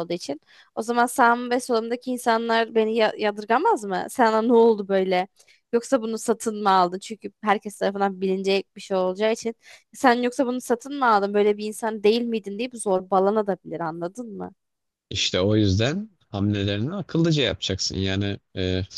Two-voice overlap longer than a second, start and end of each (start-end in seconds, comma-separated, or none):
none